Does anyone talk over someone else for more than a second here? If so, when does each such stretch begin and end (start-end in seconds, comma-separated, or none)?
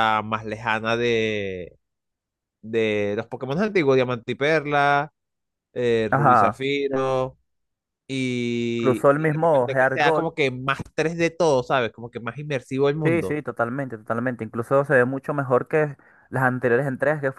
8.8-10.0